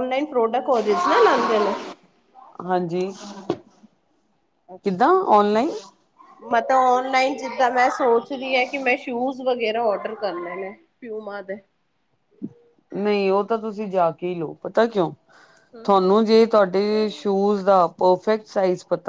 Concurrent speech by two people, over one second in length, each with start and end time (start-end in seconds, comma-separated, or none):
none